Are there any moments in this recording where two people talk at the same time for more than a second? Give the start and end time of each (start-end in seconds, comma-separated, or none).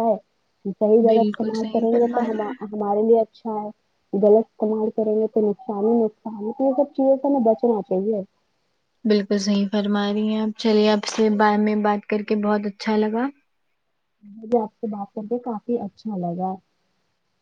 1.1-2.6